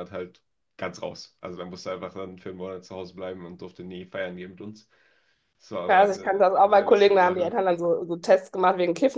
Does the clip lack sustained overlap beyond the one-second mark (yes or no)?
no